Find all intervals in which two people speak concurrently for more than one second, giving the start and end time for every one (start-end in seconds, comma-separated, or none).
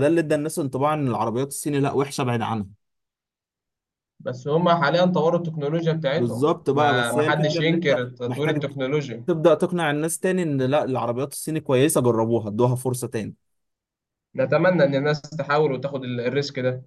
6.1-8.6